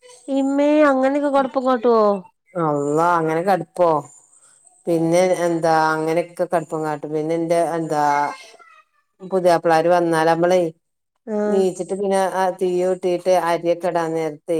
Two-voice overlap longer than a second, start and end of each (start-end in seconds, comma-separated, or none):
none